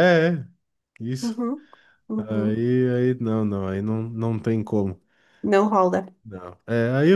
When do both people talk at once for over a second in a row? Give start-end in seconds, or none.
none